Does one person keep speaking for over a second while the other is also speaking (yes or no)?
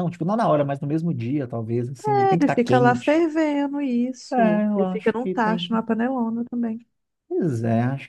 yes